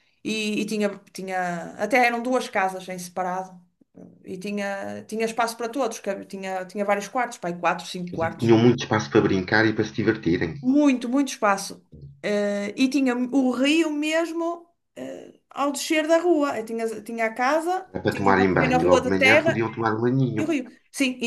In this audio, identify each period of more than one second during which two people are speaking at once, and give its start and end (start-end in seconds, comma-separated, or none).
17.9-19.6